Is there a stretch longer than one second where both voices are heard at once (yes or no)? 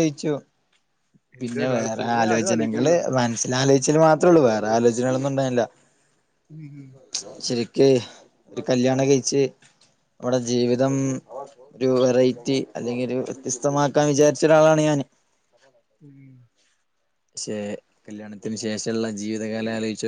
yes